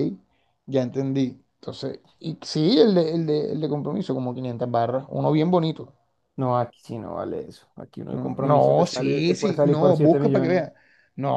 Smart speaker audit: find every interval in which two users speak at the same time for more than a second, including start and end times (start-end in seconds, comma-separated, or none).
8.1-10.6